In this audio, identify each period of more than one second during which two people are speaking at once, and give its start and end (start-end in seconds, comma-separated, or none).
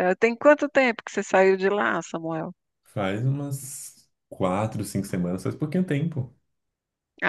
none